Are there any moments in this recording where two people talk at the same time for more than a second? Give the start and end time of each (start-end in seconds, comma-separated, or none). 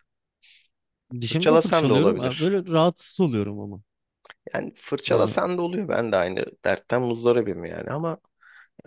1.3-2.5